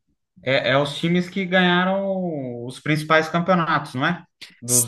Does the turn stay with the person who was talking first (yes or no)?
no